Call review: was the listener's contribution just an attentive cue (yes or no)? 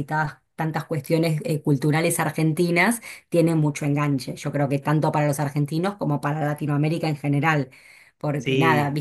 yes